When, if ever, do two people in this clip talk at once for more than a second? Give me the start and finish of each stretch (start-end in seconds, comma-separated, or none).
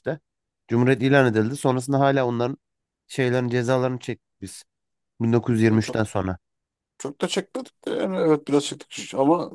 none